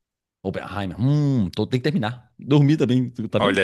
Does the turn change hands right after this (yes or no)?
yes